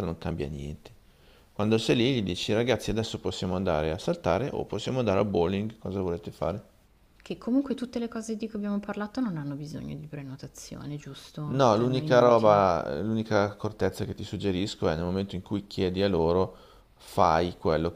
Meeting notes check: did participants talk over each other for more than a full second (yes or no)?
yes